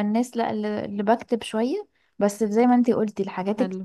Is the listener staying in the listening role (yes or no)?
yes